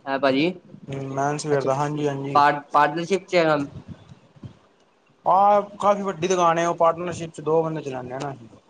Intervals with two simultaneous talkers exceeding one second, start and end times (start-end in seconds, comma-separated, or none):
none